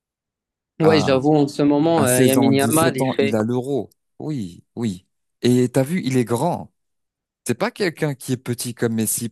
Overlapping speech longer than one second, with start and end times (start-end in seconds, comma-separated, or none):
1.9-3.4